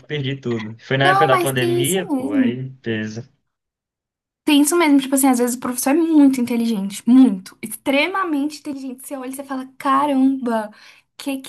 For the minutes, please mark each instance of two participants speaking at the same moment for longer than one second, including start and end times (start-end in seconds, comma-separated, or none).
1.0-2.6